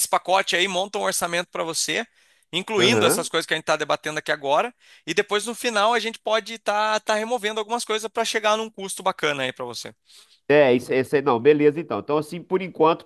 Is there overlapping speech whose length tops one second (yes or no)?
no